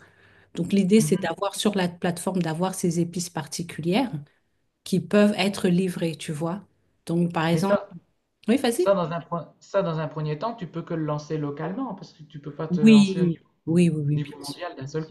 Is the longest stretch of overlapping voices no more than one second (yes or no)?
no